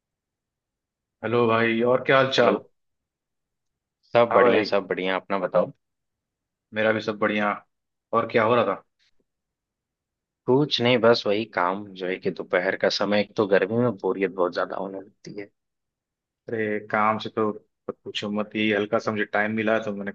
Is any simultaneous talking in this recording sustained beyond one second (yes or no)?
no